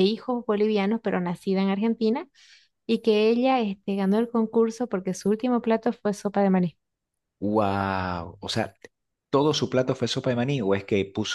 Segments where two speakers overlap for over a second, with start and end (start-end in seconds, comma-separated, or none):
none